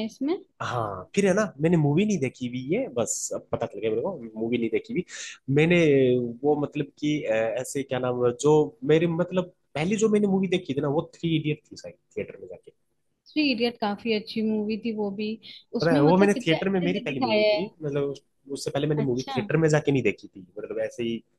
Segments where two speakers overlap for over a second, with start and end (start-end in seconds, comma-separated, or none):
15.8-17.6